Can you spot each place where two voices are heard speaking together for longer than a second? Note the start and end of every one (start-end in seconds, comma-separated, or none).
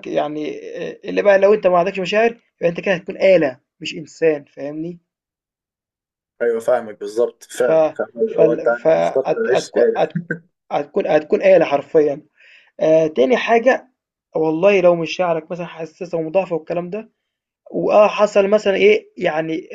8.3-9.9